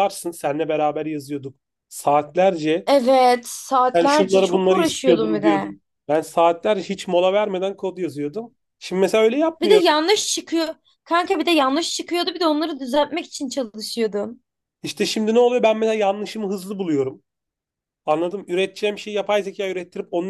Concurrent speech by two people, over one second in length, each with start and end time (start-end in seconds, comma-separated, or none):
3.9-5.8